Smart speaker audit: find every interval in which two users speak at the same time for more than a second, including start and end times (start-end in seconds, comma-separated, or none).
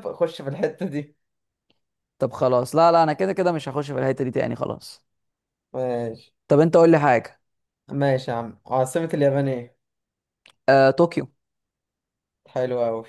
none